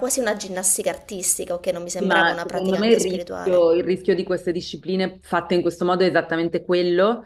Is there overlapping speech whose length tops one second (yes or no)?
yes